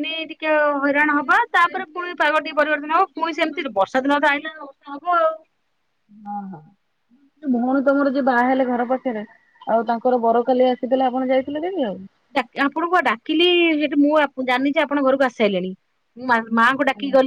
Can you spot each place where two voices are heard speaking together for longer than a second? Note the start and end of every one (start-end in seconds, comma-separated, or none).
1.1-3.6